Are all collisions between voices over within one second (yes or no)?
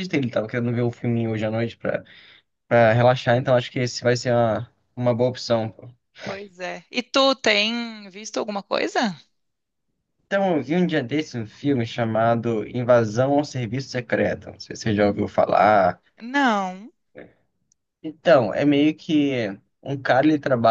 yes